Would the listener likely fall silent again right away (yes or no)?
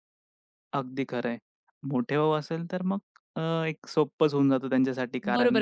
no